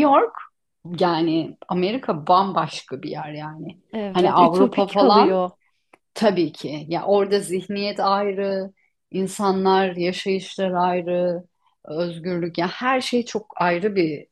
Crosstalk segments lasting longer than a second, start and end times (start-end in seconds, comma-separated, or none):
3.9-5.4